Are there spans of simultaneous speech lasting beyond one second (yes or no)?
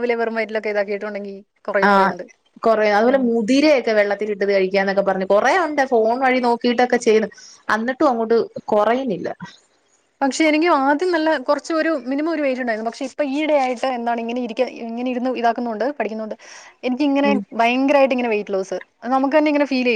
no